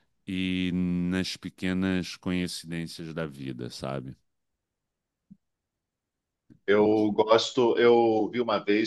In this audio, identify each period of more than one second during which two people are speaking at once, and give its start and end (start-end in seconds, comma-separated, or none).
none